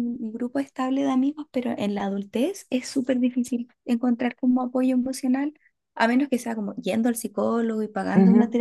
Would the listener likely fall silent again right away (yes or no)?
no